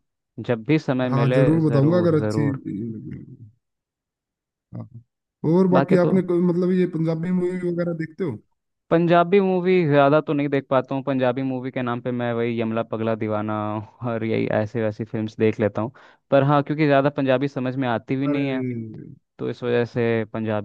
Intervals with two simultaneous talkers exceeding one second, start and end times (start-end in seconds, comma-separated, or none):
1.1-2.6